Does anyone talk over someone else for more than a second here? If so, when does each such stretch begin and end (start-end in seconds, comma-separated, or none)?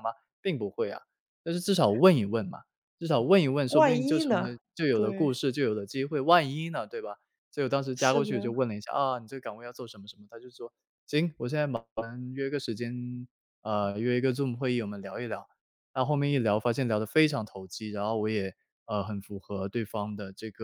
3.7-5.4